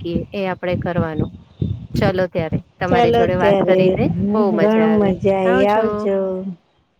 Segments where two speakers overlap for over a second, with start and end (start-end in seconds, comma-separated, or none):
2.9-4.9